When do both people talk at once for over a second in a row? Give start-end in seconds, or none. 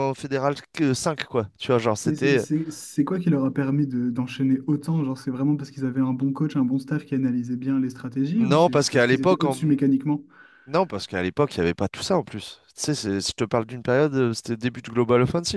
8.4-9.8